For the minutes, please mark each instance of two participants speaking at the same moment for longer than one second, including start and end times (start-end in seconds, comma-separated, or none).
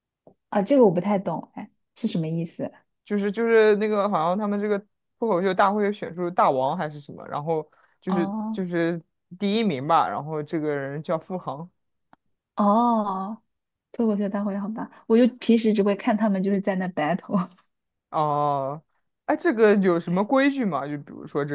none